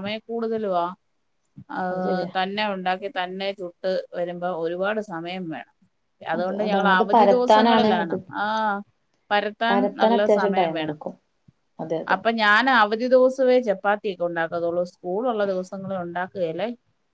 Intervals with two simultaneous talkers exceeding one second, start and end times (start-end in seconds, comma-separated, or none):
6.4-8.2